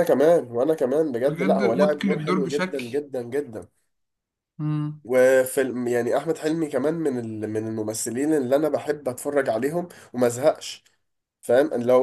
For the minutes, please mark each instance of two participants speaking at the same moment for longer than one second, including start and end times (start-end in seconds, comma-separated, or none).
1.3-2.9